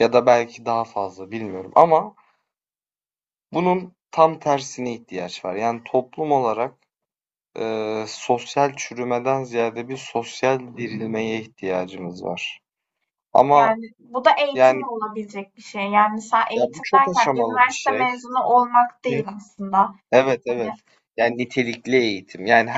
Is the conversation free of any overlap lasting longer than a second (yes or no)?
no